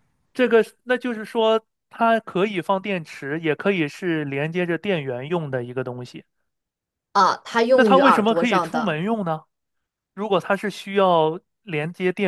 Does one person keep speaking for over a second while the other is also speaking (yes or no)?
yes